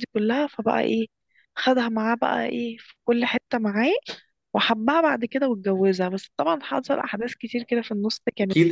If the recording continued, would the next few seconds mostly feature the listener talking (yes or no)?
yes